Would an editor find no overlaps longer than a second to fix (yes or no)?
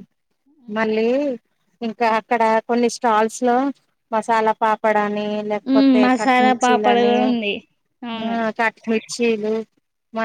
no